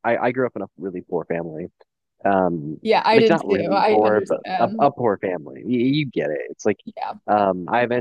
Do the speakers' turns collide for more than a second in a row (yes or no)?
yes